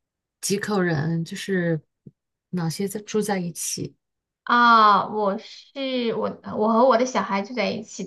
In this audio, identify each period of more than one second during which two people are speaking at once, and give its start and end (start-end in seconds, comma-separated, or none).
none